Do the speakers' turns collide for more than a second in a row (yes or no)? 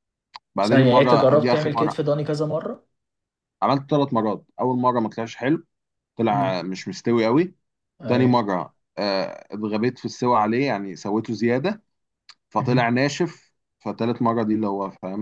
yes